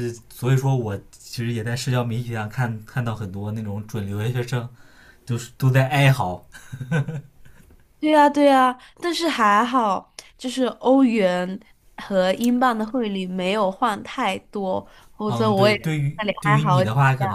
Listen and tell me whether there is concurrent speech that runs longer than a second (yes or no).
yes